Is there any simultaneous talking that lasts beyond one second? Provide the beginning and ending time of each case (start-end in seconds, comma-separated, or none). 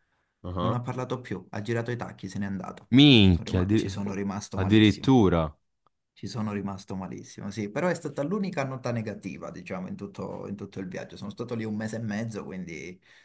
3.3-5.1